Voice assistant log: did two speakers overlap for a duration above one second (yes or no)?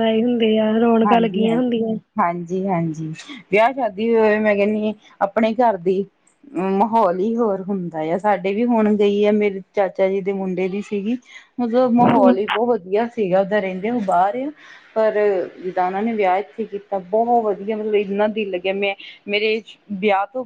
no